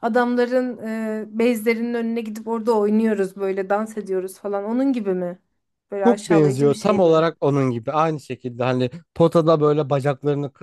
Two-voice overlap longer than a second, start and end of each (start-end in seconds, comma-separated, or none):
6.0-7.2